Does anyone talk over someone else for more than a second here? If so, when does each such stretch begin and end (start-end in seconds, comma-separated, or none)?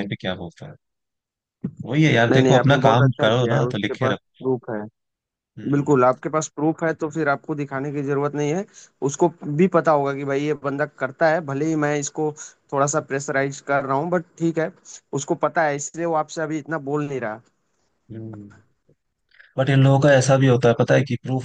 2.3-4.2